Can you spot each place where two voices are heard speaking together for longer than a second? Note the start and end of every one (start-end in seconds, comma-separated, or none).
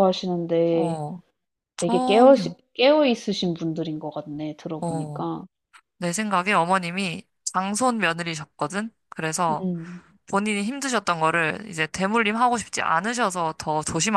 none